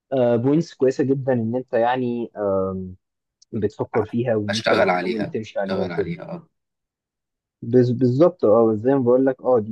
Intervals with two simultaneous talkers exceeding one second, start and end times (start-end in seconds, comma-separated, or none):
4.5-6.1